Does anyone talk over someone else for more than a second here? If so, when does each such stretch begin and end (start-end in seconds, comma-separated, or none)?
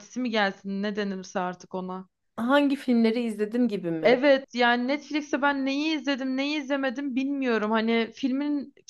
none